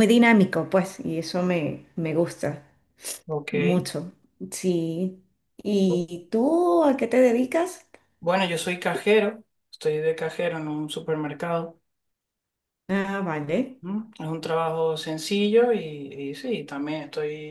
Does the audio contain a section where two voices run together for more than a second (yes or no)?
no